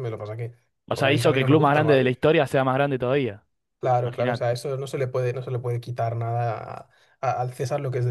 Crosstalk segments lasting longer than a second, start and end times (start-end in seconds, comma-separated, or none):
0.9-2.1